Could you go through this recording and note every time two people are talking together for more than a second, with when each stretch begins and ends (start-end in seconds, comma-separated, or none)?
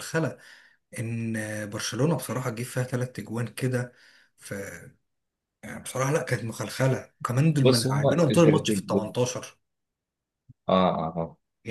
7.6-8.9